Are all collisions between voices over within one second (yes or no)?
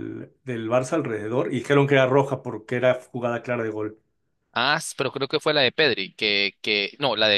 yes